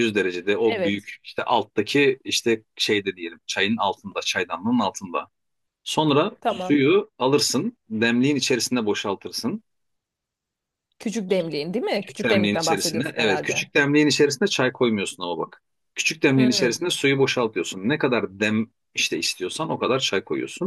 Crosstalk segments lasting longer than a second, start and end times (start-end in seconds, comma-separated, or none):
11.9-13.7